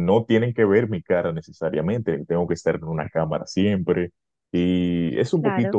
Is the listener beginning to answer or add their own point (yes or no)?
no